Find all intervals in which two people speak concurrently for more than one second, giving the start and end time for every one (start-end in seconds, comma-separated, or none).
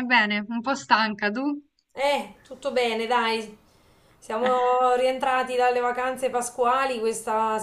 none